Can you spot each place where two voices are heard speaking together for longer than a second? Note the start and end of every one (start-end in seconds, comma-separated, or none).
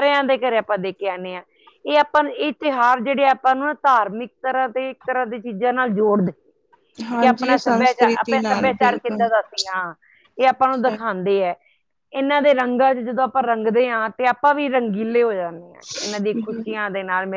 7.2-9.2